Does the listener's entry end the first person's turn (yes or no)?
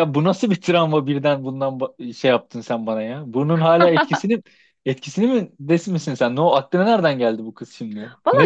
yes